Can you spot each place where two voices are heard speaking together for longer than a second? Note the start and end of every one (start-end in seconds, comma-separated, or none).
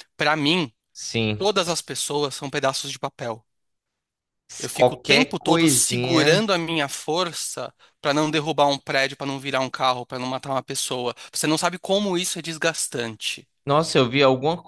4.6-6.4